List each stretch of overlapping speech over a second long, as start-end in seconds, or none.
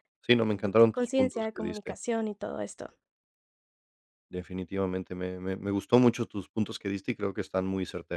0.6-1.9